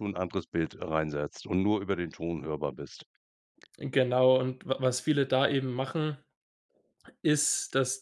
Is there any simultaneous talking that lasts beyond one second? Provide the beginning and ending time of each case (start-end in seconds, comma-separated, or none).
none